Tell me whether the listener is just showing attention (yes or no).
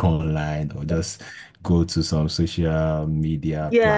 no